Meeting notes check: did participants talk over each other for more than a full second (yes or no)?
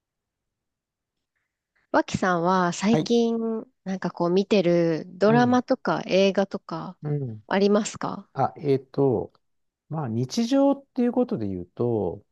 no